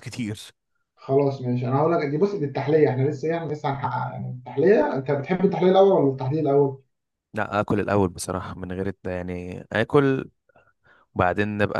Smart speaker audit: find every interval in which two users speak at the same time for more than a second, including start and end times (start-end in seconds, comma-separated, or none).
none